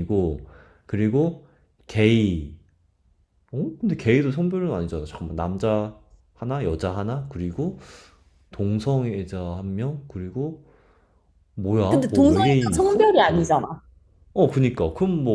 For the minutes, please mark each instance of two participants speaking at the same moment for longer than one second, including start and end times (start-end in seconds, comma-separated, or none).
11.9-13.5